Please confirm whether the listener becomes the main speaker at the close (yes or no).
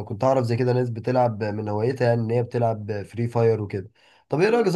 no